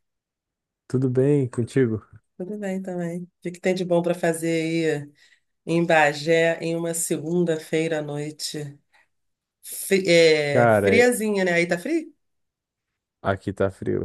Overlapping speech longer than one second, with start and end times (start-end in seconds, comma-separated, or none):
none